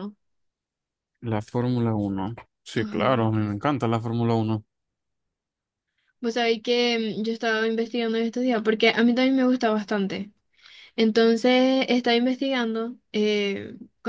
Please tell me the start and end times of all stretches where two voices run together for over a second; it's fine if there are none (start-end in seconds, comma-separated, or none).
none